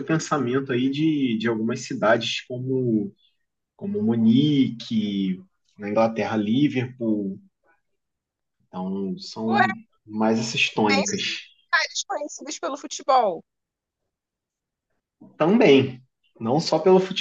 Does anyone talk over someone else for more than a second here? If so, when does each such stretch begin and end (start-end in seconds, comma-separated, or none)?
none